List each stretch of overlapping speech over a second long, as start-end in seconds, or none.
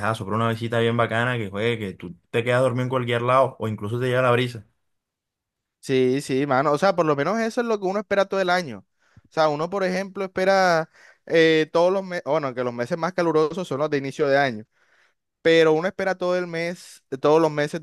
none